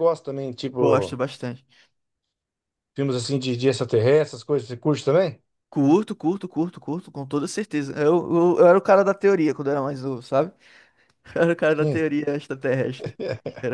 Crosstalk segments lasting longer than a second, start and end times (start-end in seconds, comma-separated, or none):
none